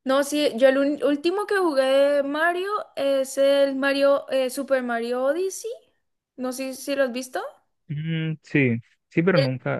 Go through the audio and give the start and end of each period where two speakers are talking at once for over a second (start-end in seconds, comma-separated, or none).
none